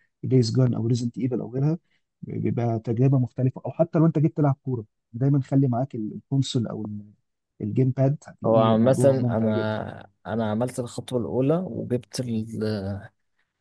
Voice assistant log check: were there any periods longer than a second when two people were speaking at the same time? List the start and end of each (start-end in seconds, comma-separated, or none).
8.4-9.8